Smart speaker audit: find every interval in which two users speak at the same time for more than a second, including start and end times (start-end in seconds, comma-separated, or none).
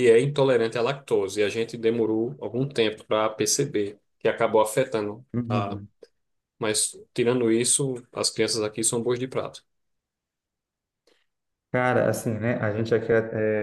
none